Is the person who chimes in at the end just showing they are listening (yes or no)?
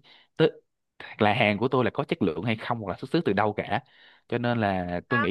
yes